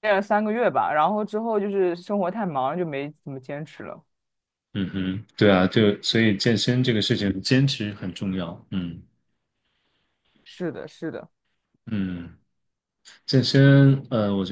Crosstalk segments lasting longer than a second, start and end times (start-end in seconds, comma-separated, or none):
none